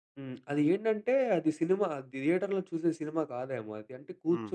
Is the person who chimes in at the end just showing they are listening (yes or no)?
yes